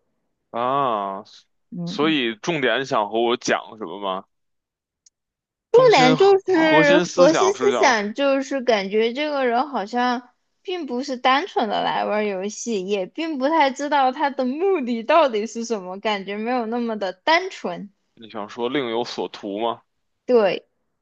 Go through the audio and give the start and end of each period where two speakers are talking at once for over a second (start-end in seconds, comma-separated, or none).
5.7-8.0